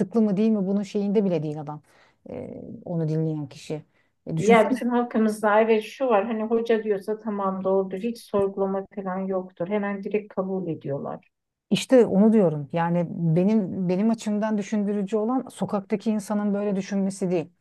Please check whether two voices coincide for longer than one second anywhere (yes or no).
no